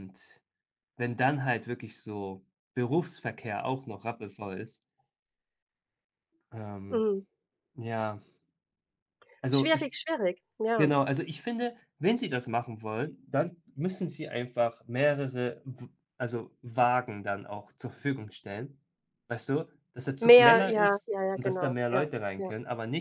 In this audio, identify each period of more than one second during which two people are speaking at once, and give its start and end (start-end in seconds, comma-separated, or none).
20.2-22.5